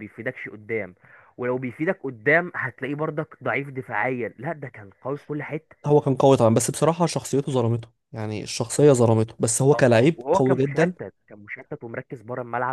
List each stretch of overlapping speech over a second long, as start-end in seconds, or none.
9.7-10.9